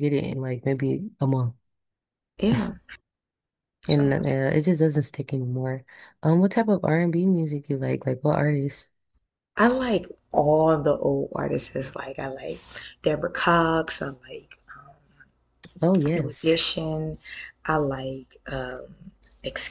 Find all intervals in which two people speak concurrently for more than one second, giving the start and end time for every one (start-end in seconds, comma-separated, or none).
none